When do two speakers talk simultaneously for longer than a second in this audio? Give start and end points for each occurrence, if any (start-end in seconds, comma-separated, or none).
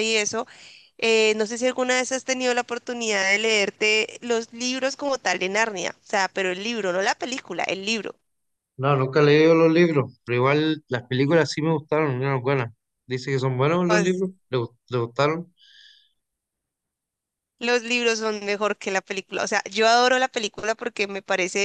none